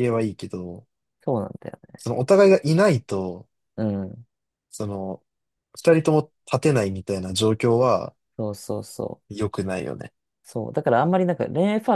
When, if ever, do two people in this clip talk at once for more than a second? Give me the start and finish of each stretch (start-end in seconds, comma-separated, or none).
none